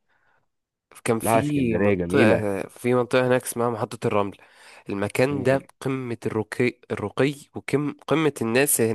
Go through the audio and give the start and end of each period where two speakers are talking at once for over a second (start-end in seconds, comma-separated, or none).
1.2-2.5